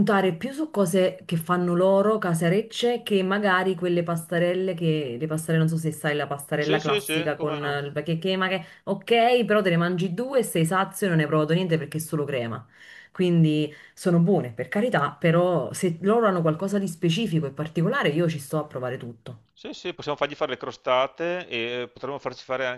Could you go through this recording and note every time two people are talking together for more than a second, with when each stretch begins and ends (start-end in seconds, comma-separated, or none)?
6.6-7.8